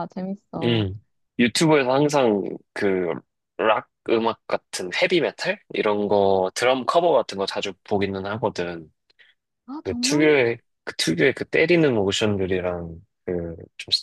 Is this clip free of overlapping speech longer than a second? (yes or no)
yes